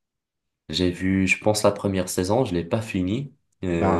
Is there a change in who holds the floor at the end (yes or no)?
no